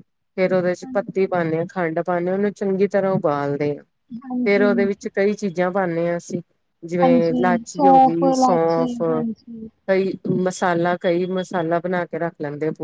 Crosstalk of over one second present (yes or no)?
yes